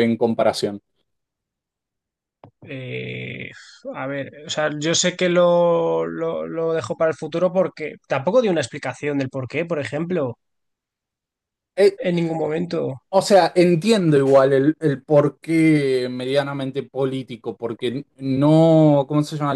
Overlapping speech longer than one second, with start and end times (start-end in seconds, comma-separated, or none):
none